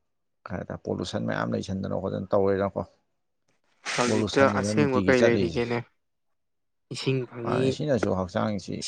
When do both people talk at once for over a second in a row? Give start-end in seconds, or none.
4.1-5.6